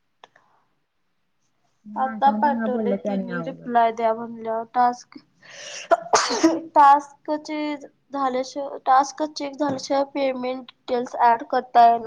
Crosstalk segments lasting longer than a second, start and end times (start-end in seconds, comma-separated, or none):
2.0-3.7